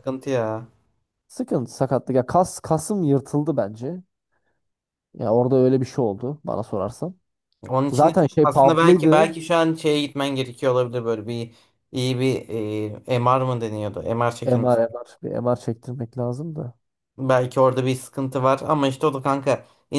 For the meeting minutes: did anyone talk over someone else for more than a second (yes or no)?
yes